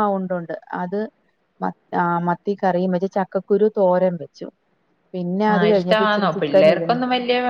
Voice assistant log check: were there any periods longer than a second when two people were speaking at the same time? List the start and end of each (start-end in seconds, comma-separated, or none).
5.5-7.0